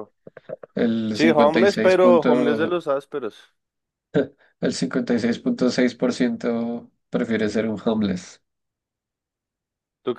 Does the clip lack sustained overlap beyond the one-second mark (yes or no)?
no